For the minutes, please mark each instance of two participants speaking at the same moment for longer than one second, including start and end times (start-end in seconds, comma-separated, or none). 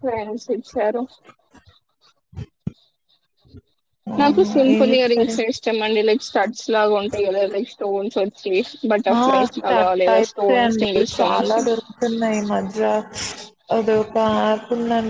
9.2-11.6